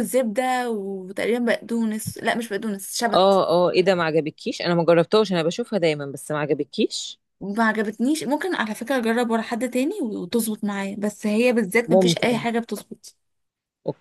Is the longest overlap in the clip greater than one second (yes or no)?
no